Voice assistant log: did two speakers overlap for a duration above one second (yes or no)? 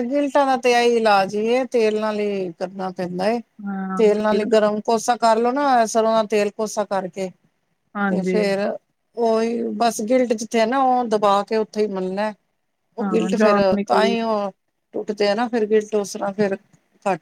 no